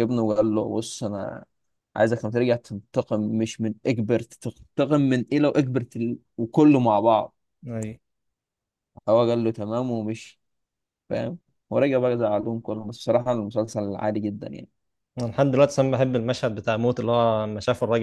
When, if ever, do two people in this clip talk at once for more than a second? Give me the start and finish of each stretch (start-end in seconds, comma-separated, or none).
none